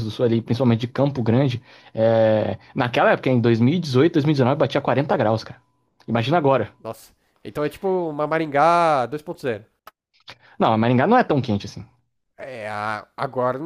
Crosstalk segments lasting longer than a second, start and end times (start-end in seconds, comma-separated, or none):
none